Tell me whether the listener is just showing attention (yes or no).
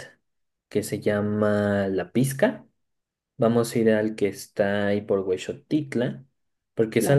yes